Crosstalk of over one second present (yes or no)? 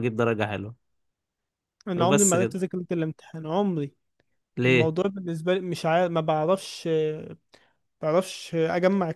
no